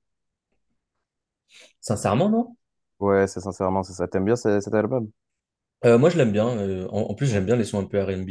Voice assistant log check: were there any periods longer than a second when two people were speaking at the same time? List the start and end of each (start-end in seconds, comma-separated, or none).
none